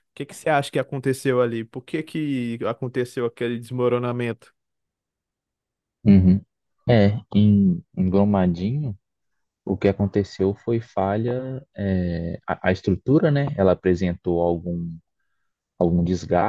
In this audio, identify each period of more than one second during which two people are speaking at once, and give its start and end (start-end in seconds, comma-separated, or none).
none